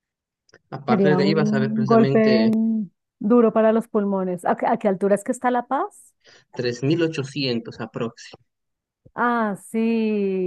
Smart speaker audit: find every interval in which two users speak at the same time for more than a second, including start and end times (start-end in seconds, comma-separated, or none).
0.9-2.5